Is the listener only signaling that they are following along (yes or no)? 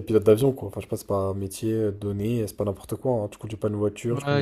no